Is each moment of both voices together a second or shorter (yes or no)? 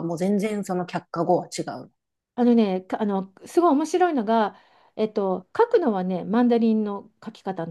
yes